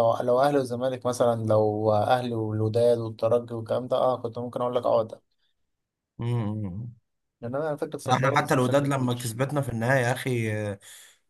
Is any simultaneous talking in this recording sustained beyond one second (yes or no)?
yes